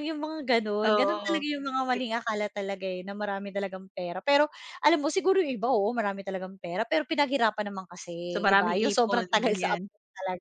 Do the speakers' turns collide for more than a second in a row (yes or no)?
yes